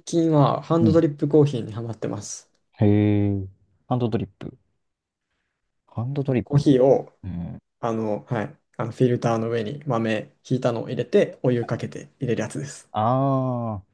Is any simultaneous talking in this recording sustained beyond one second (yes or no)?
no